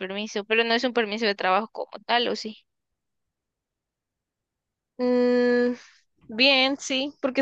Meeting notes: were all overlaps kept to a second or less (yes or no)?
yes